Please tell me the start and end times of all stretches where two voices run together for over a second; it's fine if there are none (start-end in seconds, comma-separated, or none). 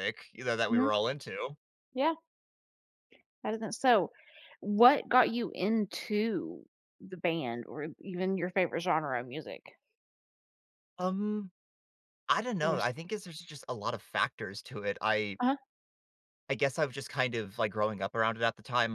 none